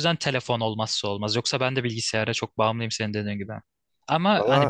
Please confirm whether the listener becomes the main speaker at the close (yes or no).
no